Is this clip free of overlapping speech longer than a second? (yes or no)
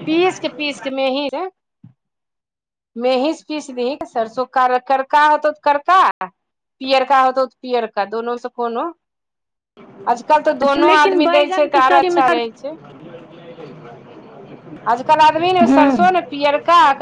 no